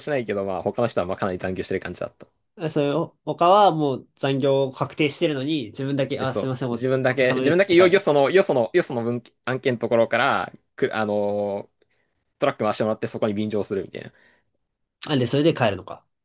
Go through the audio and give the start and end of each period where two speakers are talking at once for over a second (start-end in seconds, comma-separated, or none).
6.2-8.0